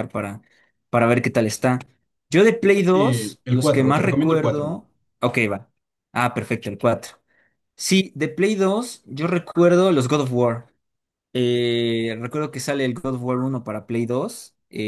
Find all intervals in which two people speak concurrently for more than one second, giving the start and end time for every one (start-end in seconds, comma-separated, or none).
2.6-4.8